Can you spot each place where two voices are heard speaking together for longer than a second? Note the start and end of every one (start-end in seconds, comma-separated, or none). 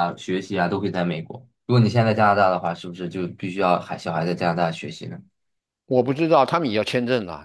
none